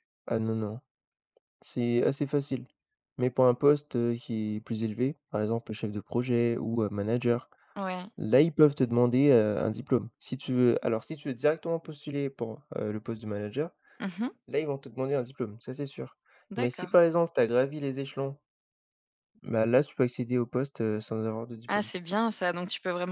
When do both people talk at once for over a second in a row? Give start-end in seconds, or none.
none